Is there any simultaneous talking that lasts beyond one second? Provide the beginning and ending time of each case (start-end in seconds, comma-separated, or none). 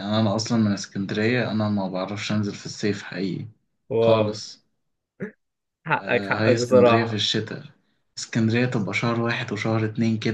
6.0-7.2